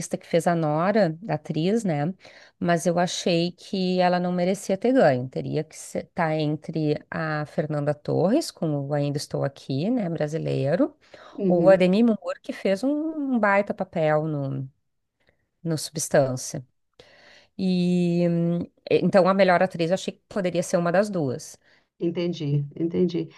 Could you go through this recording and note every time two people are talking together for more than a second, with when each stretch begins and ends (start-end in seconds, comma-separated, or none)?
none